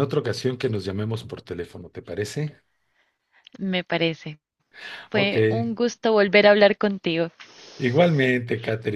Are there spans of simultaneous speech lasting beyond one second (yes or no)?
no